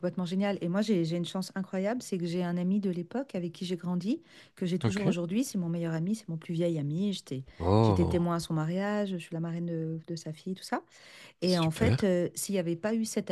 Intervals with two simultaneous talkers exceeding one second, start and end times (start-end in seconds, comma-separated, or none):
none